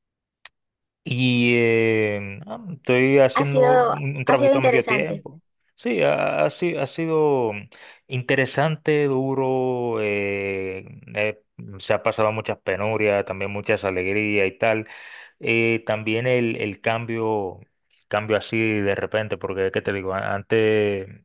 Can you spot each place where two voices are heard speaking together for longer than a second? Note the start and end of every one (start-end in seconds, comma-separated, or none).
3.3-5.2